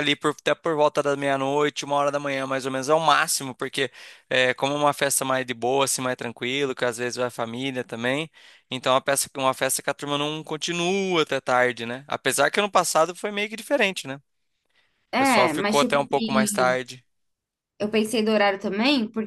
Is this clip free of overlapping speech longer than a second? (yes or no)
no